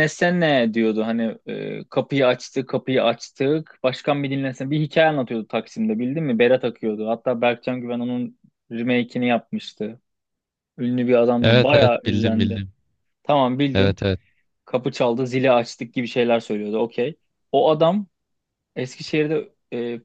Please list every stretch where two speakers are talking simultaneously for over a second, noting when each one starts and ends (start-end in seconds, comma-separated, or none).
11.4-12.6